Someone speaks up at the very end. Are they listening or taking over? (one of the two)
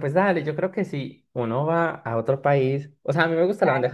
listening